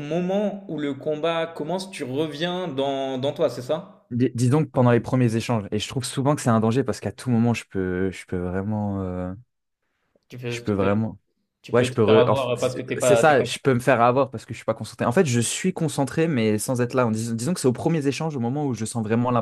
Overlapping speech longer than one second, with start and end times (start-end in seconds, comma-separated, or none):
11.7-13.4